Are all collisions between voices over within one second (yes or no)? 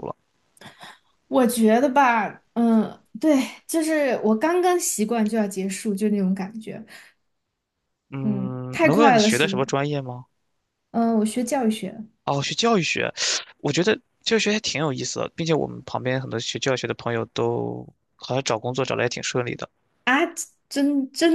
no